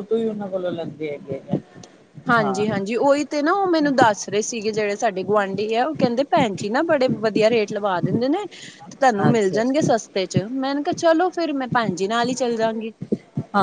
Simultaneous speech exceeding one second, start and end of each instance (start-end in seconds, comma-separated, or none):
none